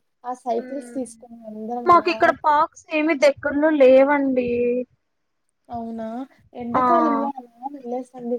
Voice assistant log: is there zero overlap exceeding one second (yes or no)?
yes